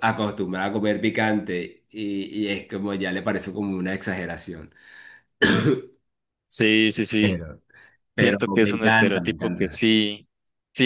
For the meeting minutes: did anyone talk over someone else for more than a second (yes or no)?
yes